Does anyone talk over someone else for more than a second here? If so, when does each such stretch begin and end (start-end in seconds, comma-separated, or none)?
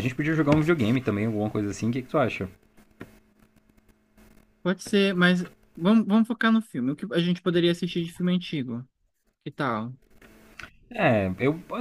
none